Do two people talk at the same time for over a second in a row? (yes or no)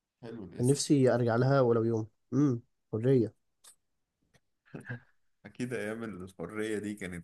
no